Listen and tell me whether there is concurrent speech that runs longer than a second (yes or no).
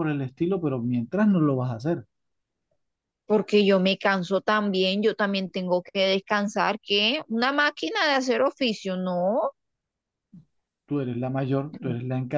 no